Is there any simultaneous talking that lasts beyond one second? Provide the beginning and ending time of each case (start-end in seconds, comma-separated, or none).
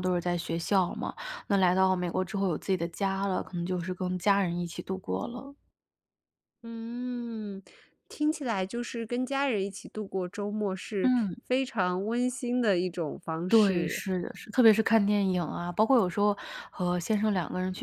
none